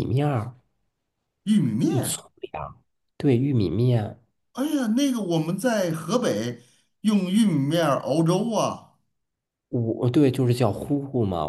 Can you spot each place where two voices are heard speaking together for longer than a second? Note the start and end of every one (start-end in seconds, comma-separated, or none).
none